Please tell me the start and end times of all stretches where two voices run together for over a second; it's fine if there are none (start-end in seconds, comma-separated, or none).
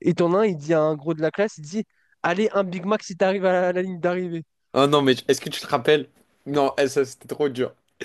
none